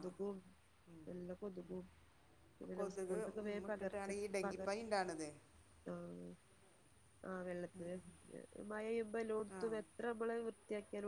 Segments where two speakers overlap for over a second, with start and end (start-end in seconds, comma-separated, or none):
2.6-4.6